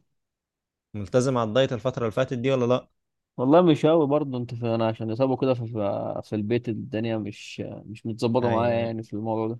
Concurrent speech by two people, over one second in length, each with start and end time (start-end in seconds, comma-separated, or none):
none